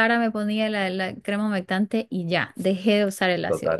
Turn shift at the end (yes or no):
no